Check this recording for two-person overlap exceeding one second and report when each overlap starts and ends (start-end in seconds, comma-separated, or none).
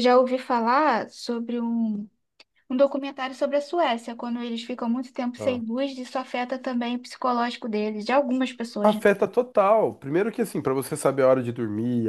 none